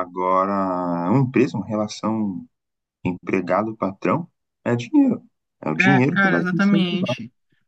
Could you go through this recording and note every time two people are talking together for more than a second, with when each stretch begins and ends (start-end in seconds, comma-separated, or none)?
5.8-7.1